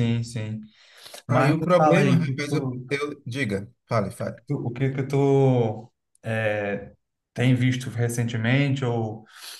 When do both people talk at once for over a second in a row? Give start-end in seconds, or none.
1.3-2.8